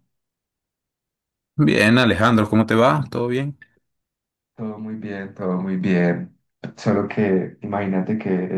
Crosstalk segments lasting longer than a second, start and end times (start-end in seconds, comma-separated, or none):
none